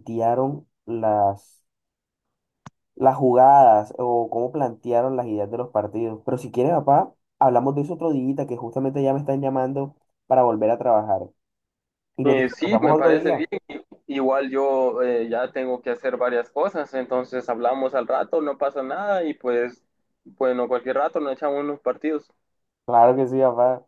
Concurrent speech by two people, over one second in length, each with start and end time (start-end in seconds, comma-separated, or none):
12.2-13.4